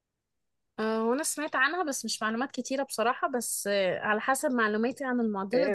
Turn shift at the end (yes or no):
yes